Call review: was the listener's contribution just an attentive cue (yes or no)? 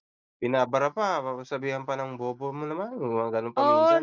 no